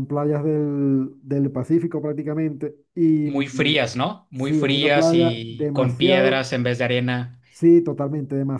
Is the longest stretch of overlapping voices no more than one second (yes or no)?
no